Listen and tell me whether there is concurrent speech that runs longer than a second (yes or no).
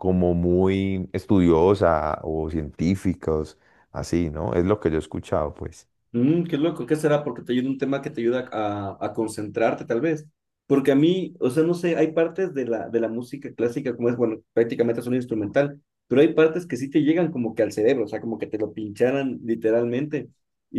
no